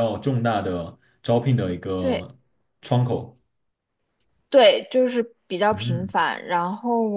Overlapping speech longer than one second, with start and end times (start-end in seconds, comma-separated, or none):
none